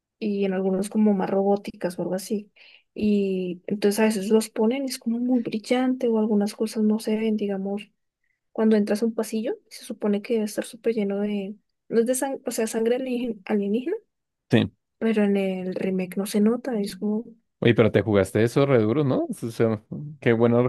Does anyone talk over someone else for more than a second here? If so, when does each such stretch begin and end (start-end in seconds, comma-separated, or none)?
none